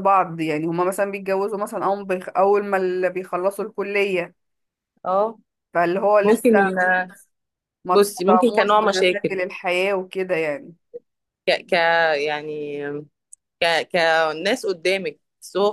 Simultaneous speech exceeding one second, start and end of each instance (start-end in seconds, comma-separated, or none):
7.9-9.4